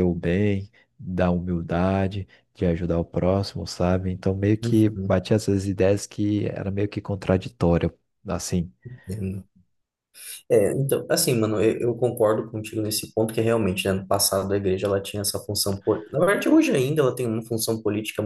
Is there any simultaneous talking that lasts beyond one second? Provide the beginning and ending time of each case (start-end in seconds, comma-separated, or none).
none